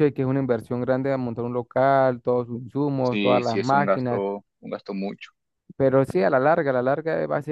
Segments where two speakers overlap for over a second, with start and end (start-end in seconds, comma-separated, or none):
3.0-4.2